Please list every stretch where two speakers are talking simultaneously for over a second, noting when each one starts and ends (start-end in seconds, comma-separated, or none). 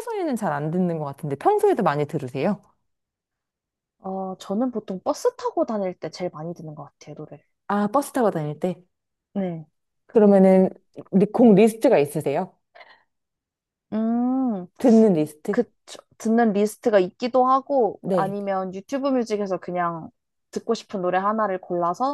none